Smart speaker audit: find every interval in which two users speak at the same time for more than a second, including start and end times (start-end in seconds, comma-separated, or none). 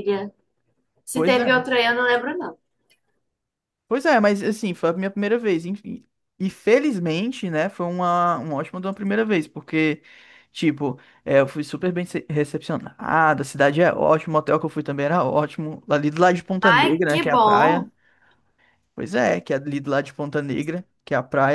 16.6-17.9